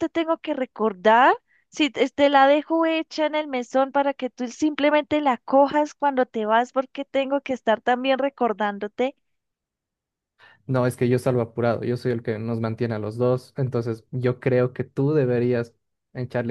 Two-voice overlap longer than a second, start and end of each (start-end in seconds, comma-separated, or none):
none